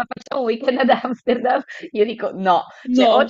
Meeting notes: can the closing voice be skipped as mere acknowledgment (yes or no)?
yes